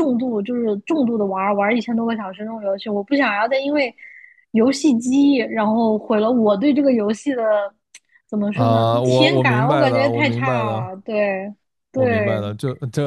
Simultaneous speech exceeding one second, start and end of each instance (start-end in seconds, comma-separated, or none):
8.5-10.9